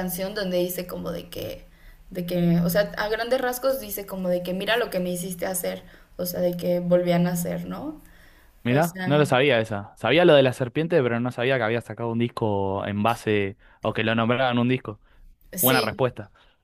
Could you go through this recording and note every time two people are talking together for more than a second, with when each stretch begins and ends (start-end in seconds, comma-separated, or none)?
none